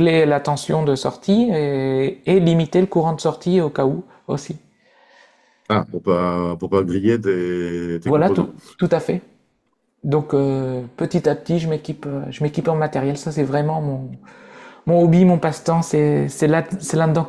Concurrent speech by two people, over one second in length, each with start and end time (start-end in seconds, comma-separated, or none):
none